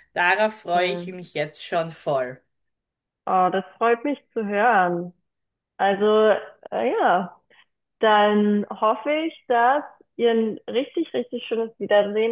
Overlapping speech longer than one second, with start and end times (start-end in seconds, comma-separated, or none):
none